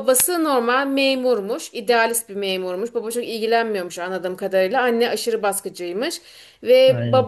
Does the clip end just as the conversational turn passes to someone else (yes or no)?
no